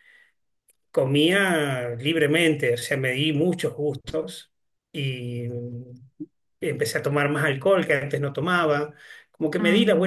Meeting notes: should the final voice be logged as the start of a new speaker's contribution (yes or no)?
no